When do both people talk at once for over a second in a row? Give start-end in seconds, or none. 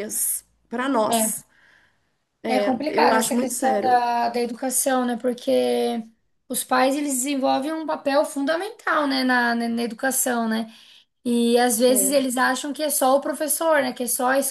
2.5-4.0